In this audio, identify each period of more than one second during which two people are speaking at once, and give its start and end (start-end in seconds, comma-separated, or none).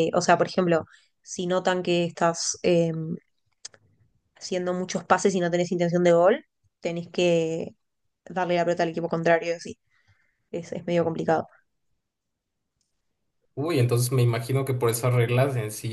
none